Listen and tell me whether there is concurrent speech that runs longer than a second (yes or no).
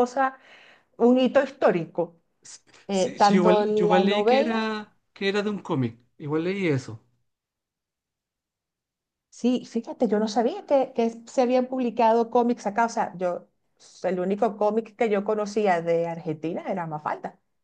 yes